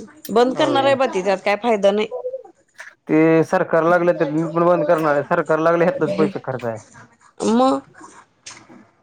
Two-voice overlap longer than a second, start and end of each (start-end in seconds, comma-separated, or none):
none